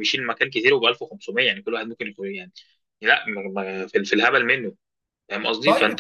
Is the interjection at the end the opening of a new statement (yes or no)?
no